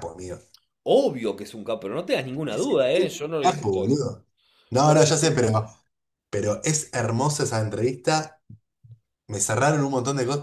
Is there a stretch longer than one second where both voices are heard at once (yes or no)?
yes